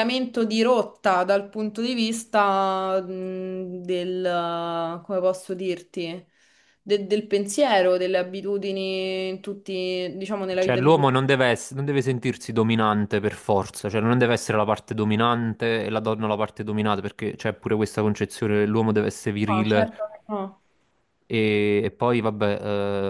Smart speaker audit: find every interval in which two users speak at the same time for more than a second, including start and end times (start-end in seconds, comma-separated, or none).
none